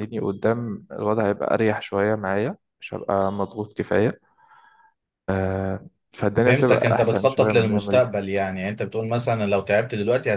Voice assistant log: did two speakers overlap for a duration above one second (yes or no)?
yes